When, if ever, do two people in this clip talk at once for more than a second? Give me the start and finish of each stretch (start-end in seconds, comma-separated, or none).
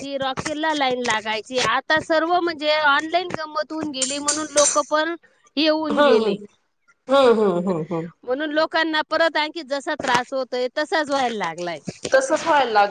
none